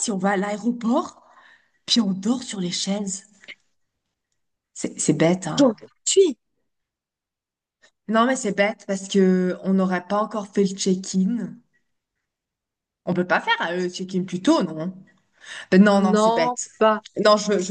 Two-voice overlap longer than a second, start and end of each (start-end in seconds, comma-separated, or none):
none